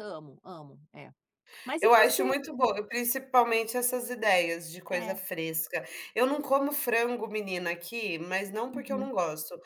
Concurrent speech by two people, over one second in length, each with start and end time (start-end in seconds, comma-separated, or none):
none